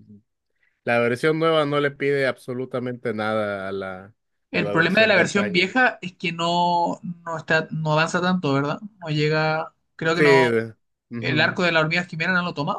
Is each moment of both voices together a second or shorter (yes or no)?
no